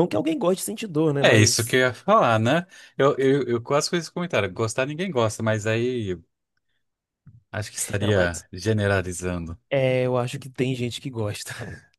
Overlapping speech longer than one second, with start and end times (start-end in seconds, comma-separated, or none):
none